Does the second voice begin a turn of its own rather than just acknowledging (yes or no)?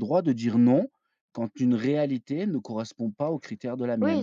yes